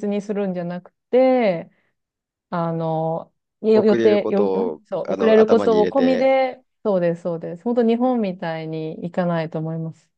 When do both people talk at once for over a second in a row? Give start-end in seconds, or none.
3.7-6.3